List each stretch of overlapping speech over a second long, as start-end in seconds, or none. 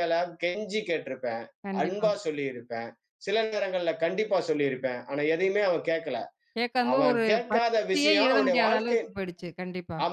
6.9-9.0